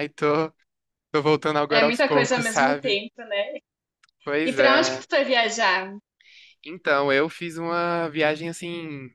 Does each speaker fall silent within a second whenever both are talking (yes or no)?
no